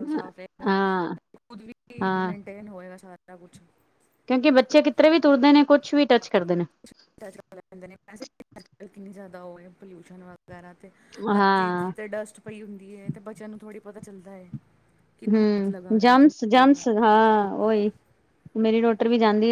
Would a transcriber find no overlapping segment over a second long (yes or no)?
no